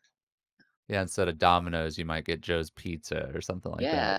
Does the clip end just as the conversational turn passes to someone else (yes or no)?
yes